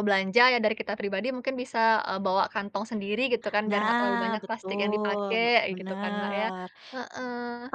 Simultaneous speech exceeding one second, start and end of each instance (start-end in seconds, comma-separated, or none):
3.7-6.5